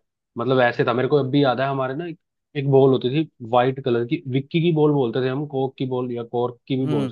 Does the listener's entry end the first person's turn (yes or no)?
yes